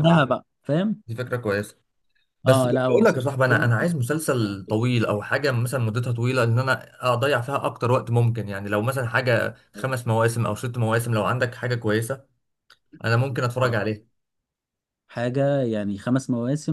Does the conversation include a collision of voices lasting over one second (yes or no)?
yes